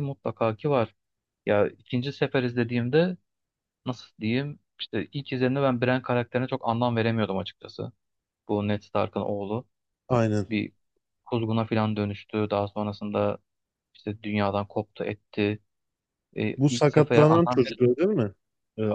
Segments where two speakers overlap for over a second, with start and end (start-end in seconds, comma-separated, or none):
16.6-18.0